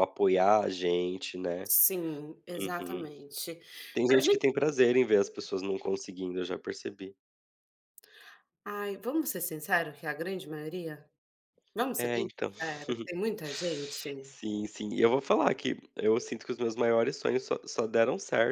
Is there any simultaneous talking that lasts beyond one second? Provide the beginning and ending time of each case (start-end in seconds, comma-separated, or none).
none